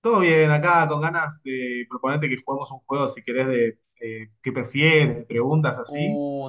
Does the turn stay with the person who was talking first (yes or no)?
no